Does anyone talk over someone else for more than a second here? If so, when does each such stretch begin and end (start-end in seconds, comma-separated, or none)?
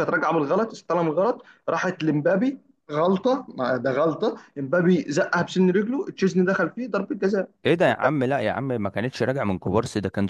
none